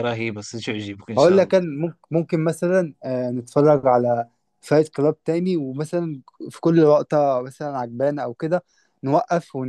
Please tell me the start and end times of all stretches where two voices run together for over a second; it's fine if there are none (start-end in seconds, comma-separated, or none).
none